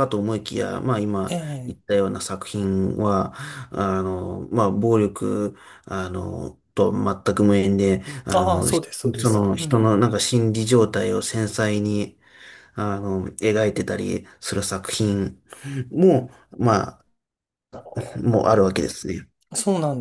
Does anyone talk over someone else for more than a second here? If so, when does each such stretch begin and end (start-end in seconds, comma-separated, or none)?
8.3-10.0